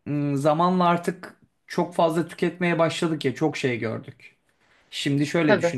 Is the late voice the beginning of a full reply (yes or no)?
no